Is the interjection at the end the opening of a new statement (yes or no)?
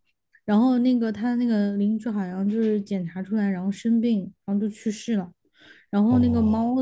no